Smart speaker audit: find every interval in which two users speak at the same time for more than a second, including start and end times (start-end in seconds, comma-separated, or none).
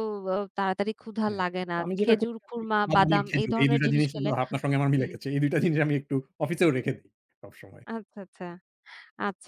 1.3-4.3